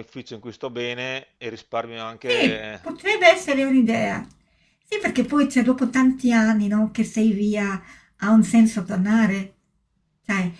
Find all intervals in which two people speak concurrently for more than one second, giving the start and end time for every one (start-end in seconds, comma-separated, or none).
none